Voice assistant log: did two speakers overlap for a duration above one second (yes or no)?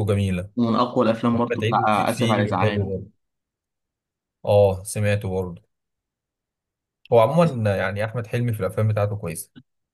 yes